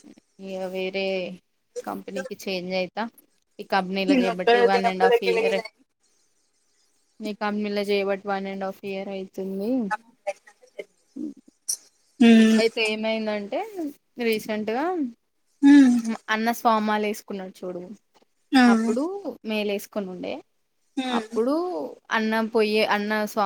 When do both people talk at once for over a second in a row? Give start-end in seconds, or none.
4.1-5.6